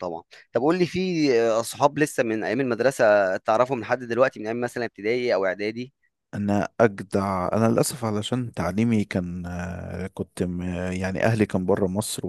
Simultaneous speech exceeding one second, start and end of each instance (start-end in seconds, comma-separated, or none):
none